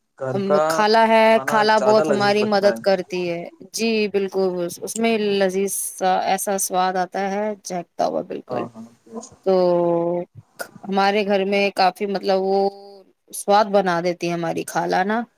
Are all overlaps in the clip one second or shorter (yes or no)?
no